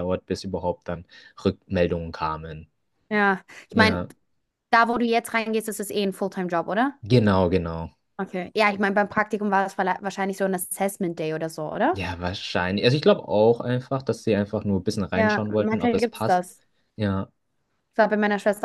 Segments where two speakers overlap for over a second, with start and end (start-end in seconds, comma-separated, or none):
15.1-16.4